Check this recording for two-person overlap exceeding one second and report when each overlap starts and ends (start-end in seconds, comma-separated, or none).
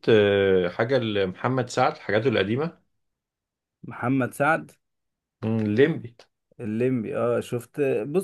none